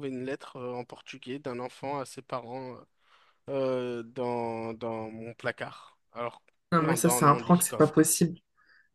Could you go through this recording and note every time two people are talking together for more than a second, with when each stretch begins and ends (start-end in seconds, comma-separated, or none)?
6.8-8.1